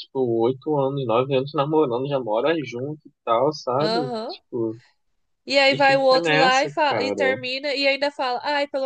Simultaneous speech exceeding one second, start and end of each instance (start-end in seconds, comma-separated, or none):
5.7-7.4